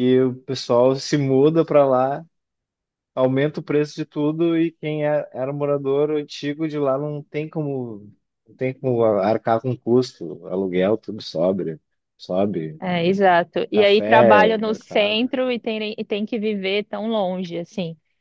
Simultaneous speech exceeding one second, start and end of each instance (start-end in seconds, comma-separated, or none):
13.7-15.3